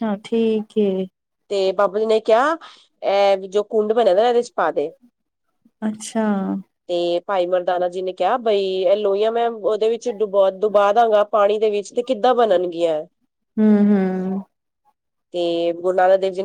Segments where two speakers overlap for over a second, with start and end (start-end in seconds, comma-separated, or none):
none